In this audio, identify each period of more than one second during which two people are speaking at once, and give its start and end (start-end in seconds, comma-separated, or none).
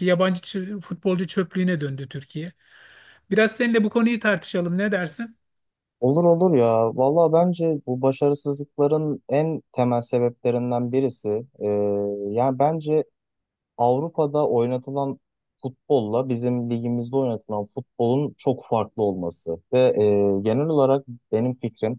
none